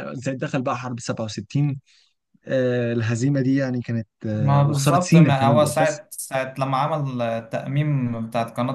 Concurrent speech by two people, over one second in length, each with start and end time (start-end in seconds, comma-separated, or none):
4.4-6.0